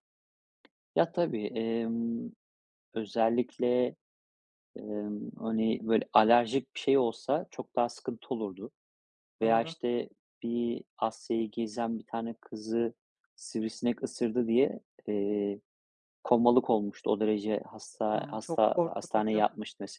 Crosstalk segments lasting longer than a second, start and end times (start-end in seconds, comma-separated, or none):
18.1-19.4